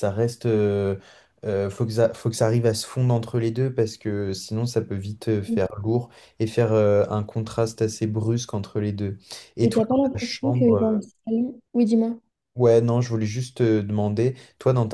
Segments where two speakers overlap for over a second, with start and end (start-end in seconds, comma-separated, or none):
9.6-11.0